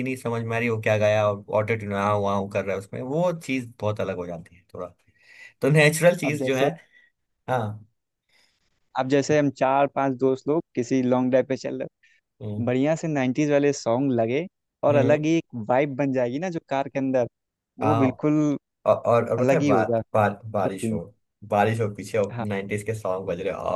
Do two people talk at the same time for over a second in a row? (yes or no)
yes